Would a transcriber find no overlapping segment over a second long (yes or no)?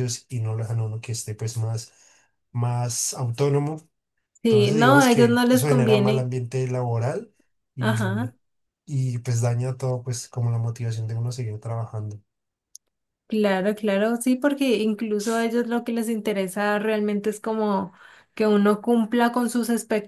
no